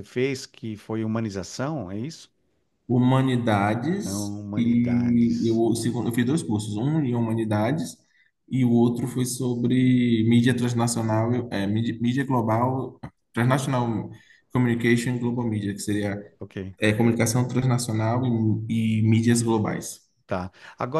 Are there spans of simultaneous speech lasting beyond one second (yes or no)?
yes